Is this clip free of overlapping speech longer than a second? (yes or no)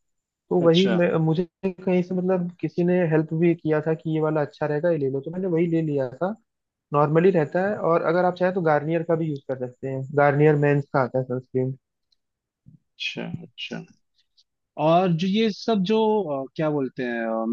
yes